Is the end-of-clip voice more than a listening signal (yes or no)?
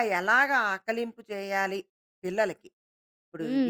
yes